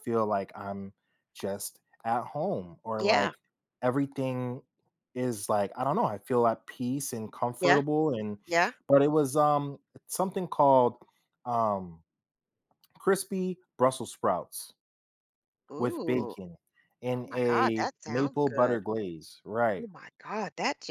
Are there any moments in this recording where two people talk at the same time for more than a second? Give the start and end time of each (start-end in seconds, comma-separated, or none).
17.1-18.8